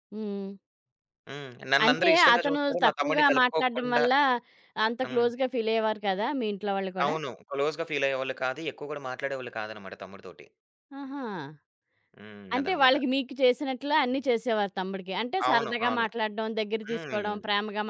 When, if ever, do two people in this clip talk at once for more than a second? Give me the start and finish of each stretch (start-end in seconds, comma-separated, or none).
1.8-4.0